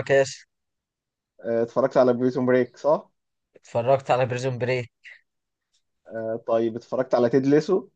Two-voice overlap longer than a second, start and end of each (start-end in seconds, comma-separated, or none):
none